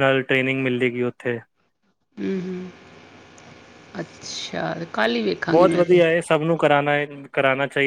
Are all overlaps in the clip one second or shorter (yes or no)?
yes